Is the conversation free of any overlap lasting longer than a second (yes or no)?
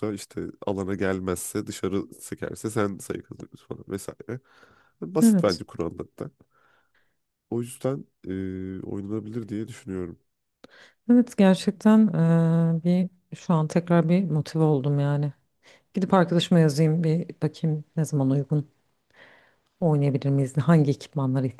yes